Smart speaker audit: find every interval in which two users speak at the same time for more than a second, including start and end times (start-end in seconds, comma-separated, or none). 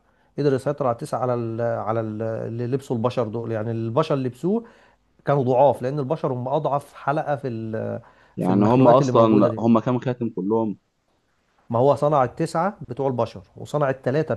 8.4-9.6